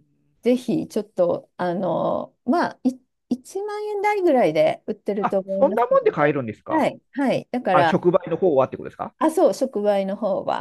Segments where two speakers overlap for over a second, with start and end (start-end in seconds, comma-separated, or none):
5.2-6.9